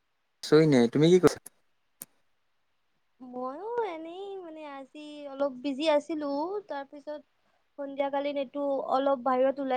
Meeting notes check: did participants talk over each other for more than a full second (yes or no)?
no